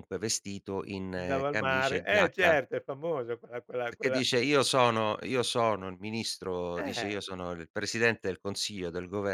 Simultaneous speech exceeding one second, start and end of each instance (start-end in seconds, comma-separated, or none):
1.2-2.6